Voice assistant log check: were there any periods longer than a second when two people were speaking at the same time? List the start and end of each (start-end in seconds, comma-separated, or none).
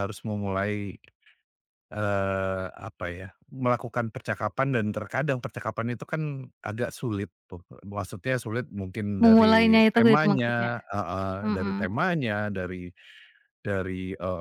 9.2-10.7